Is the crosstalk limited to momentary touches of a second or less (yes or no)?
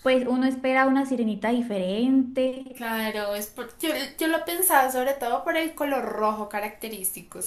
yes